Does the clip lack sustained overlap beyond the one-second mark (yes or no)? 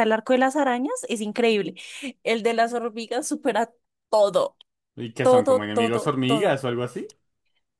no